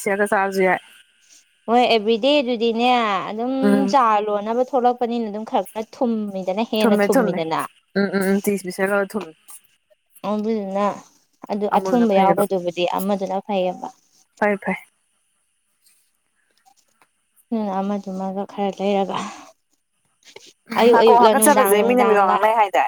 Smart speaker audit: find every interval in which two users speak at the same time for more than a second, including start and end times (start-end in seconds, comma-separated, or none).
20.9-22.4